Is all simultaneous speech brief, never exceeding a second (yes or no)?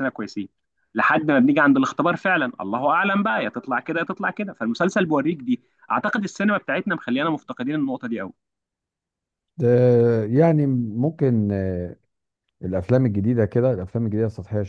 yes